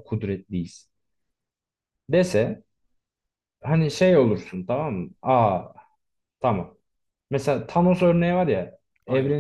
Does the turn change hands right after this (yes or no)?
no